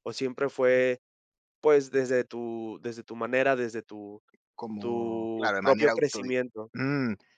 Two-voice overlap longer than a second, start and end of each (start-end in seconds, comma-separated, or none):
4.8-6.4